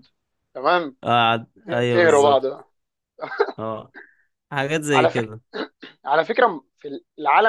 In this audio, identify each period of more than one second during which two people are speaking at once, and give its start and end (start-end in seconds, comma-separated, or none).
none